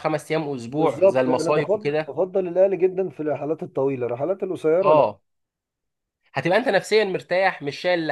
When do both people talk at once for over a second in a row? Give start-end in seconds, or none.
0.7-2.2